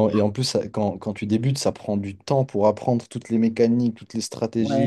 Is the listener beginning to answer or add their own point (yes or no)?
yes